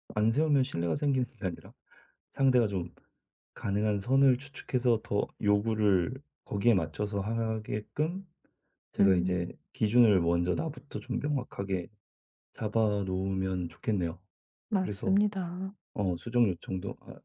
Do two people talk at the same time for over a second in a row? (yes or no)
no